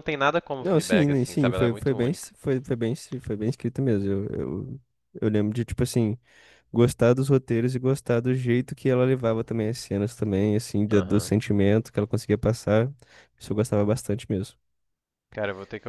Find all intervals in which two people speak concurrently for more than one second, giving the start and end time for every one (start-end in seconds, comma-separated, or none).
0.6-2.3